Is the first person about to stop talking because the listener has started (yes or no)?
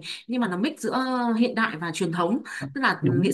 no